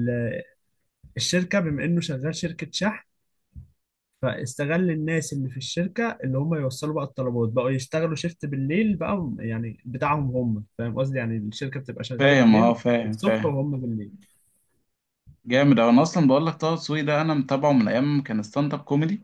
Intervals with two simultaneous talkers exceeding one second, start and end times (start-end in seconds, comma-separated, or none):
12.2-13.6